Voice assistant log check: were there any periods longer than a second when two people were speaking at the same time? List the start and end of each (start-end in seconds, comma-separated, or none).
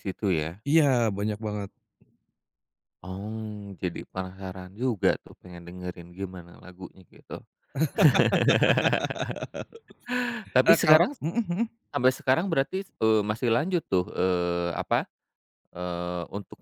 none